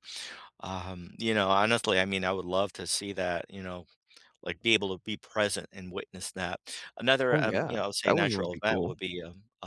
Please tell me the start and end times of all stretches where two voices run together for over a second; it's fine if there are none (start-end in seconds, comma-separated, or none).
7.3-8.9